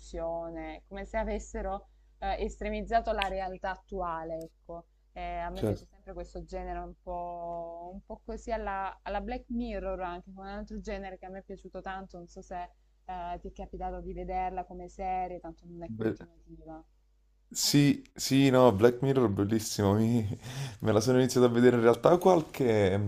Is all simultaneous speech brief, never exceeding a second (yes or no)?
yes